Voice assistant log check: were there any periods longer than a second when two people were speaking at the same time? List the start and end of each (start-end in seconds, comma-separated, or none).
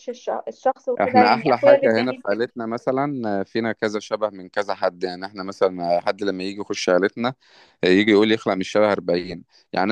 1.0-2.5